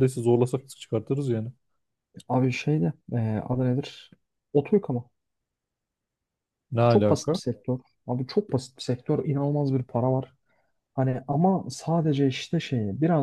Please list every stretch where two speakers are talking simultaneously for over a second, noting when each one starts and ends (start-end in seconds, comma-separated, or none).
none